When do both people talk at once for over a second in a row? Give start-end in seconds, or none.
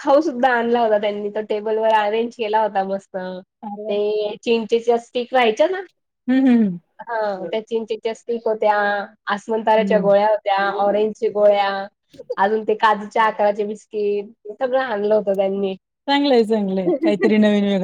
none